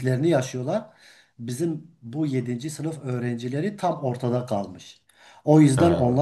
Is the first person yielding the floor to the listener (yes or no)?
no